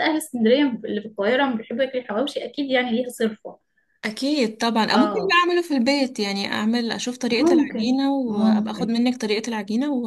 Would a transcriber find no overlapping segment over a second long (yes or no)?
no